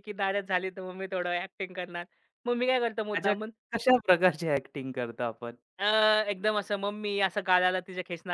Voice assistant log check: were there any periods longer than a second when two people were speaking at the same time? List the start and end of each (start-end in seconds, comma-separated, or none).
none